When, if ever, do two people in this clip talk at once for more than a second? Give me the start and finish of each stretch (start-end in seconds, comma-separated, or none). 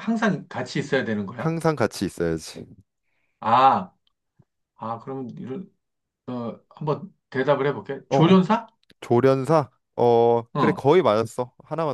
none